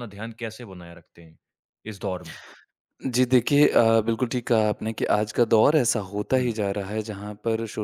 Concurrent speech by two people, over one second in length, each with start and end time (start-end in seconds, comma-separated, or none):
none